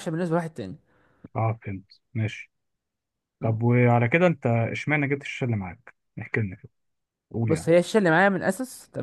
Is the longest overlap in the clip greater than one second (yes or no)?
no